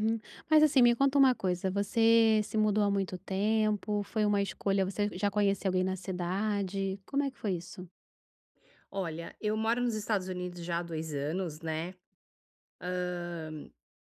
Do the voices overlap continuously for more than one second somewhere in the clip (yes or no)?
no